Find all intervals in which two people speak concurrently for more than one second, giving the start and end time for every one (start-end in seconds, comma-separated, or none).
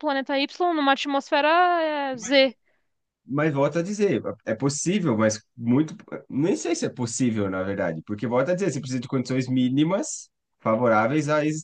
none